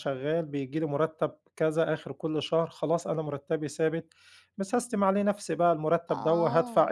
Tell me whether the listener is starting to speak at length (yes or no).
no